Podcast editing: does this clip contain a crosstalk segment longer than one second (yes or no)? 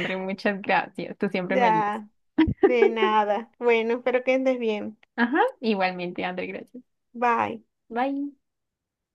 no